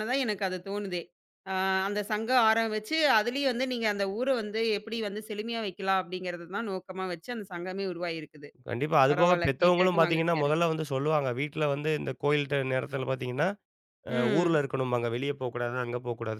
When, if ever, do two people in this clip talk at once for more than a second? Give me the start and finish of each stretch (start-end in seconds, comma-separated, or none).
9.1-10.6